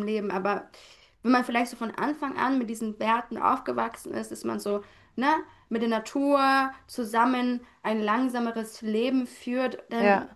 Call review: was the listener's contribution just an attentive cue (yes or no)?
yes